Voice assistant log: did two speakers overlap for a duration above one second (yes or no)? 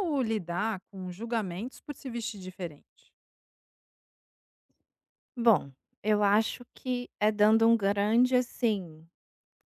no